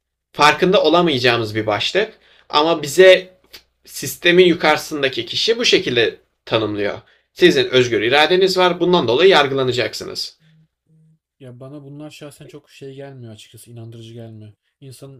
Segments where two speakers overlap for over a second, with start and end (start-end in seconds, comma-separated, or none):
none